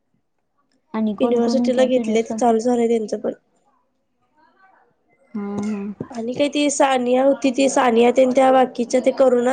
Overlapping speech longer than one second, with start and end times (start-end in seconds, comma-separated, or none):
1.2-2.6